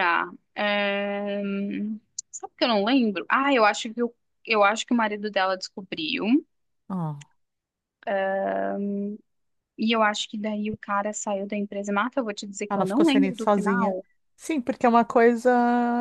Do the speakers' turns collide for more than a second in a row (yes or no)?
yes